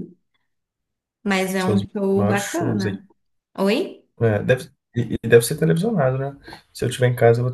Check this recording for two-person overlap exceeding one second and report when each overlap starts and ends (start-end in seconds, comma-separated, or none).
1.7-3.0